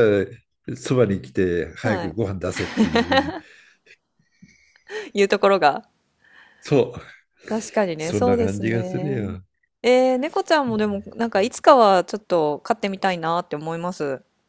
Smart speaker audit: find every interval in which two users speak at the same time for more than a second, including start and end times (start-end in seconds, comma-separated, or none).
8.0-9.2